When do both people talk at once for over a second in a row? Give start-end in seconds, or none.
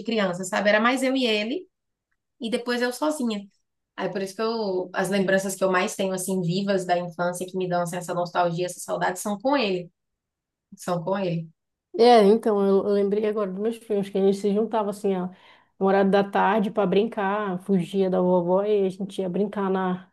none